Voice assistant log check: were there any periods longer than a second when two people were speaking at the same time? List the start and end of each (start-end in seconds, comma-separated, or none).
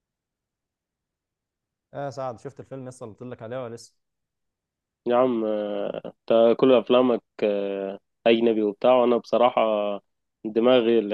none